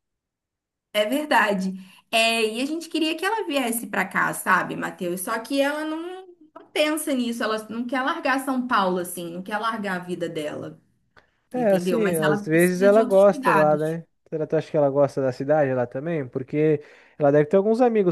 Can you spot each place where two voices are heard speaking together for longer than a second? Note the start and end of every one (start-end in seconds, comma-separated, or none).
11.5-14.0